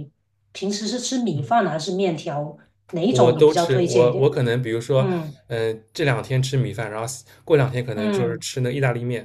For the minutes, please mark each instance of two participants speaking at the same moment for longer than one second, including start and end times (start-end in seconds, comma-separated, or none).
3.1-4.3